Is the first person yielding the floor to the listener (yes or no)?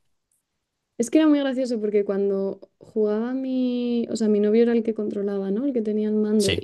no